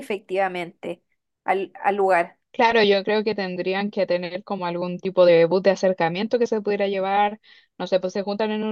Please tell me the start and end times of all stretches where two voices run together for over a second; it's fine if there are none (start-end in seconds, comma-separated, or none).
none